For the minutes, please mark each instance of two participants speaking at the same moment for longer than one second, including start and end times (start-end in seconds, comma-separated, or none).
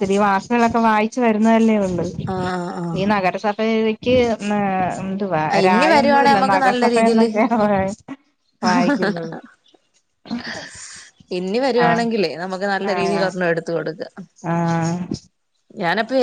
5.5-7.3